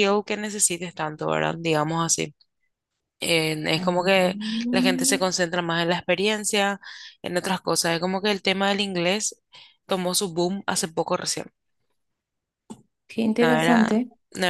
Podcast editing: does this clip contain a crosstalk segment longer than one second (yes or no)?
yes